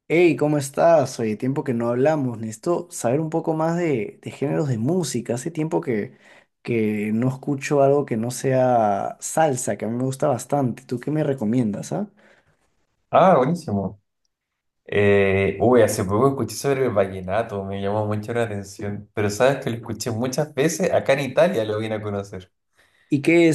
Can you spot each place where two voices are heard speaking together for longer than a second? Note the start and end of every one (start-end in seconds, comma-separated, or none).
none